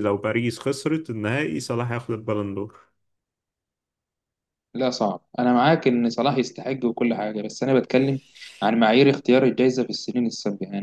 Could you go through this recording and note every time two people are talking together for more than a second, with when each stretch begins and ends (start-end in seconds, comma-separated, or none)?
none